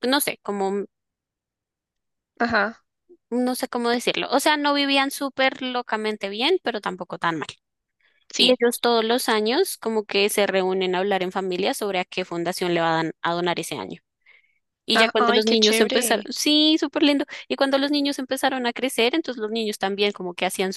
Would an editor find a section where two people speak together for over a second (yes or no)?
yes